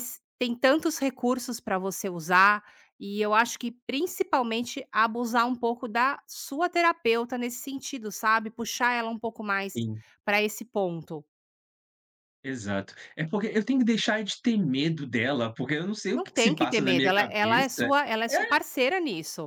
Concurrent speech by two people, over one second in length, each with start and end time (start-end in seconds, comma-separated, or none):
16.1-17.9